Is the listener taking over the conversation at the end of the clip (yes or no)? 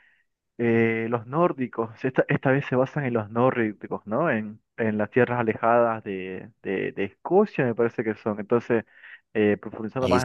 no